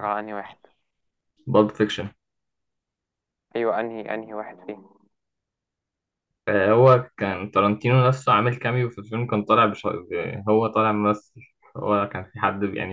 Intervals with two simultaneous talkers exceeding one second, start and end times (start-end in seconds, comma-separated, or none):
none